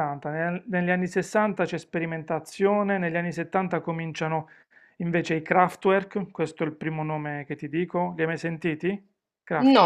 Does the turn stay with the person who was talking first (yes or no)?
no